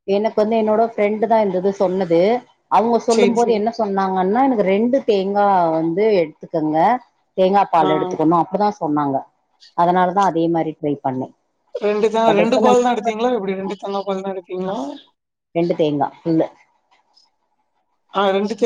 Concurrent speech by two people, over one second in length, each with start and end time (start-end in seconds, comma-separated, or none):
none